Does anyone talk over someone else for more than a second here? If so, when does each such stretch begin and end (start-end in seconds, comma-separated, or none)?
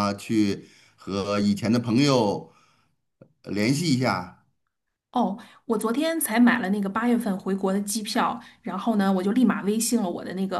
none